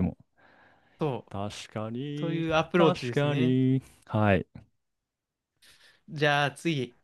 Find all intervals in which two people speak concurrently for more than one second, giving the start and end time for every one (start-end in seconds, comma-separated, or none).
2.1-3.6